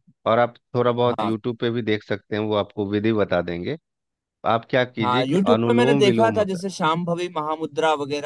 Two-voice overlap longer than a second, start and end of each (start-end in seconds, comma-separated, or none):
5.0-6.6